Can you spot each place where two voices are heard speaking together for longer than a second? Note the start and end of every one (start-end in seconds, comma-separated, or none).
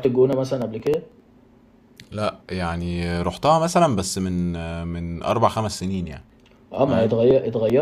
none